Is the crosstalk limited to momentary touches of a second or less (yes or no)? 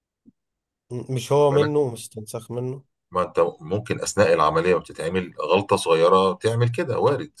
yes